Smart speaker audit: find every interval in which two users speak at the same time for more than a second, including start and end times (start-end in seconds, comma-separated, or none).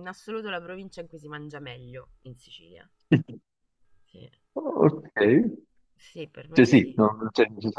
none